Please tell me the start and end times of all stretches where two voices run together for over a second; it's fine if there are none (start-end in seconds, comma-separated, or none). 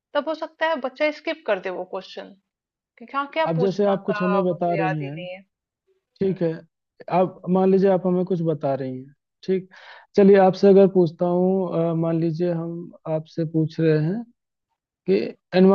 3.5-5.2